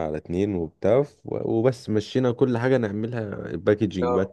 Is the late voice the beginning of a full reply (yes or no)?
no